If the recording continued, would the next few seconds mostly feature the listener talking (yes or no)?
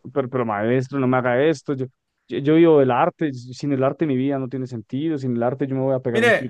yes